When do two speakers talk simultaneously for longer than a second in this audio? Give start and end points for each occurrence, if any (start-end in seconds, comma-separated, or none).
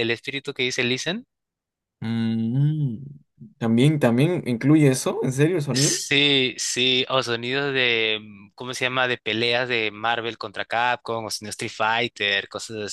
none